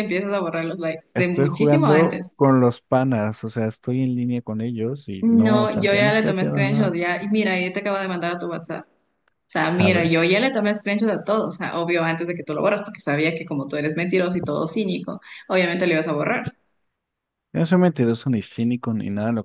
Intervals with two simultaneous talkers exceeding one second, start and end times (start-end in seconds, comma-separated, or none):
1.1-2.4, 5.2-6.9